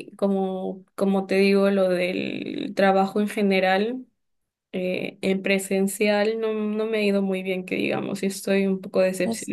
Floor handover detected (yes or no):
no